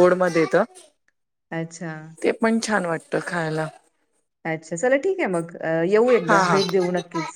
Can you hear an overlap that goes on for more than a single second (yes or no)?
no